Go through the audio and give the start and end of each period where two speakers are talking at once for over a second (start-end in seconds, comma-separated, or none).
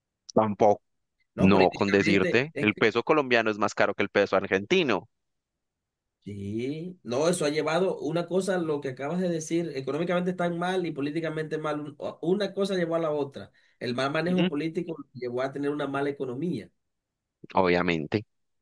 1.4-2.8